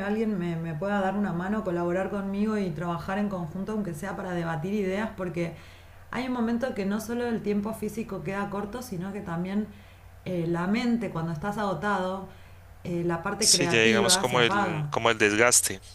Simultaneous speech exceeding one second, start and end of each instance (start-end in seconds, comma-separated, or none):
13.4-14.9